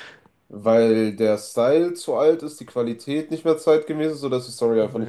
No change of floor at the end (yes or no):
no